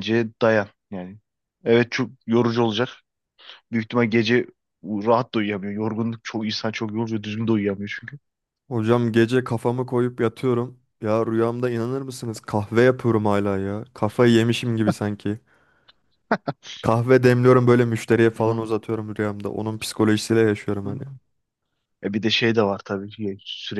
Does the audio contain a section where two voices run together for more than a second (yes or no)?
no